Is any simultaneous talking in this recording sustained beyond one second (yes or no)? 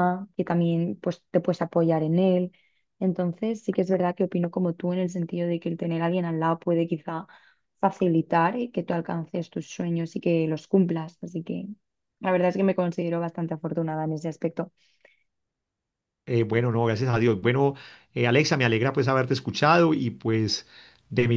no